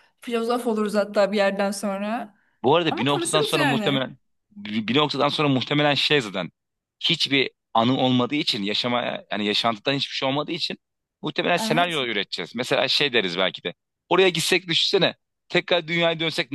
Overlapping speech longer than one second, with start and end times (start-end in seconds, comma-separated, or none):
2.9-4.1